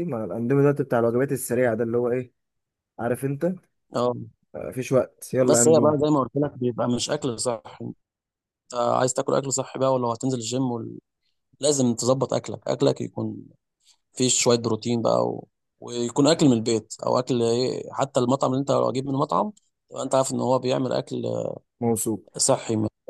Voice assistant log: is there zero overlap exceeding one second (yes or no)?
yes